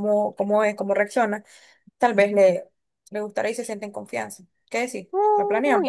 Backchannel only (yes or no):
no